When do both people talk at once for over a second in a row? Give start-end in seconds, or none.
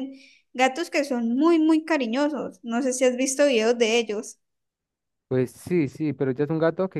none